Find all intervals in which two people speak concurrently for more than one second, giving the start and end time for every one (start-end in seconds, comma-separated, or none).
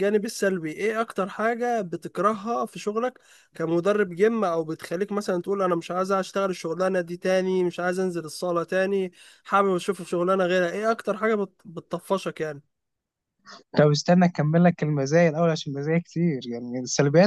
none